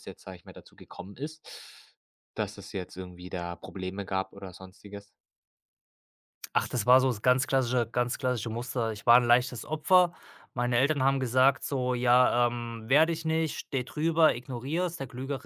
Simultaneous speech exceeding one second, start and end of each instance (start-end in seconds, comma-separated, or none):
none